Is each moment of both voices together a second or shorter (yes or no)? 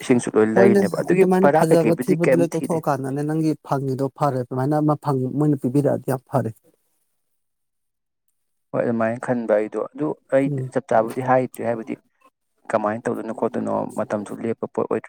no